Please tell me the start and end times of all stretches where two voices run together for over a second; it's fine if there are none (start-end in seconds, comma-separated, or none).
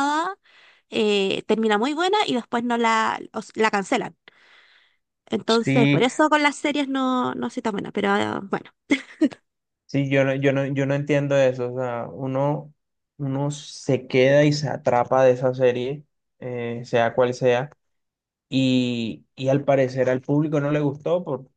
none